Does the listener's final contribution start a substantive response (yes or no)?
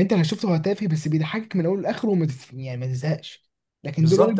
yes